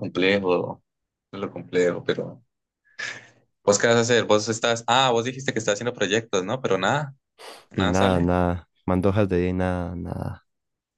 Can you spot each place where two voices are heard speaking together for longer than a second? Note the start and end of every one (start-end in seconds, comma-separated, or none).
none